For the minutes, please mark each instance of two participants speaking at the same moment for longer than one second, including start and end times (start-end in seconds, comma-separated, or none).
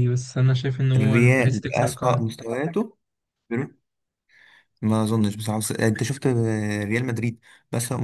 1.0-2.2